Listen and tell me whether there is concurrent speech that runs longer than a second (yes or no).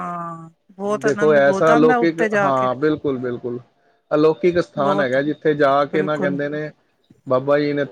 yes